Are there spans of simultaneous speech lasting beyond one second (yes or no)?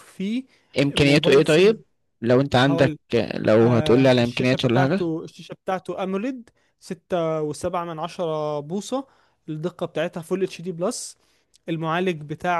yes